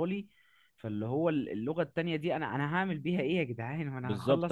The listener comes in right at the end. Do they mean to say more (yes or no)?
yes